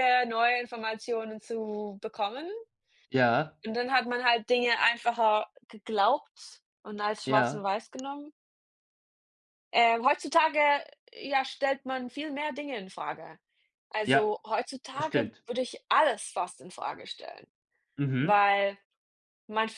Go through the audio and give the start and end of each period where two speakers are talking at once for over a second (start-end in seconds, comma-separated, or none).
none